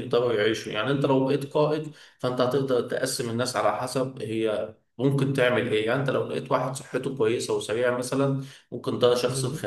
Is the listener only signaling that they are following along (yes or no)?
yes